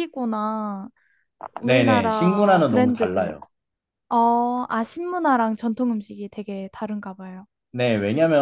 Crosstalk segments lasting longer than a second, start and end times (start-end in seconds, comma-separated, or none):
1.6-3.4